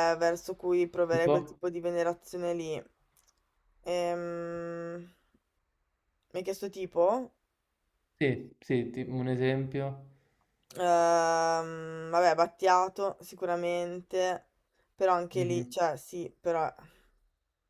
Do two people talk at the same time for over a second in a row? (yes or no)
no